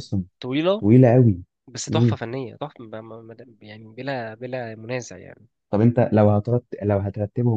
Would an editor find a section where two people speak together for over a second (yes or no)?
no